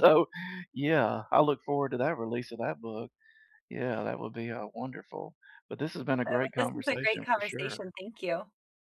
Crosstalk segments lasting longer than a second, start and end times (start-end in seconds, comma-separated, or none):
6.3-7.9